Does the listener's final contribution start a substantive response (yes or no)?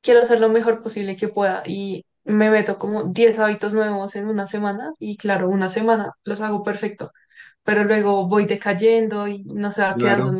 yes